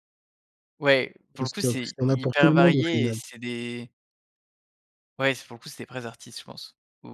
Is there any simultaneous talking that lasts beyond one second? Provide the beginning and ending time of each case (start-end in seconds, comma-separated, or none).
1.4-3.2